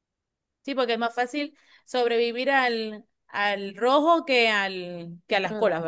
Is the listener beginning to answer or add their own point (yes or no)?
yes